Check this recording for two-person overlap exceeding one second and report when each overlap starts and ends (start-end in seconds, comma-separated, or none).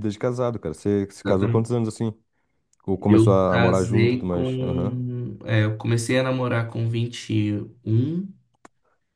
3.1-5.0